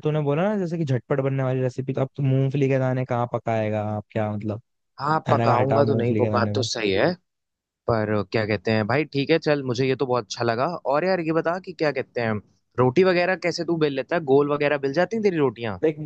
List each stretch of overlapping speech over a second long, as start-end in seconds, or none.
5.3-6.5